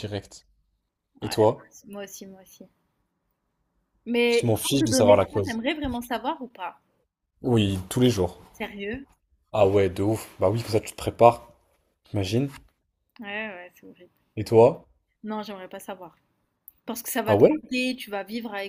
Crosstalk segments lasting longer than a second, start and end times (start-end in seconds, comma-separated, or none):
4.3-5.6